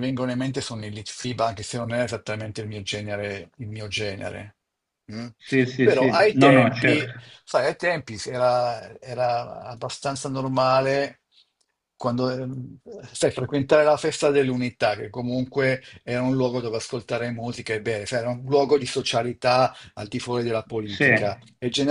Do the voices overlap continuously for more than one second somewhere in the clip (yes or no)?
yes